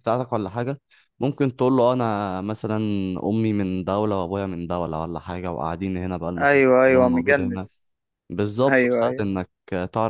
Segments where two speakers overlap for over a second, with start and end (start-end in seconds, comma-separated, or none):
6.4-7.7